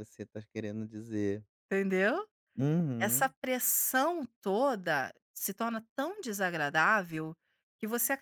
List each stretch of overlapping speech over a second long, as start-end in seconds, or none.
none